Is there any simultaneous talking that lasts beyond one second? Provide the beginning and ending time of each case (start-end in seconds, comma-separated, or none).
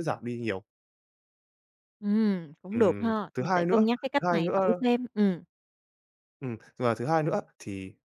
2.7-4.8